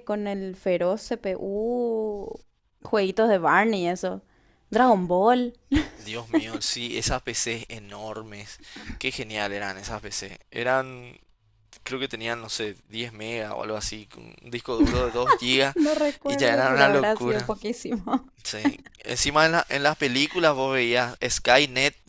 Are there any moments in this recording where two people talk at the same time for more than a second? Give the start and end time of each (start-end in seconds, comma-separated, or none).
16.2-17.5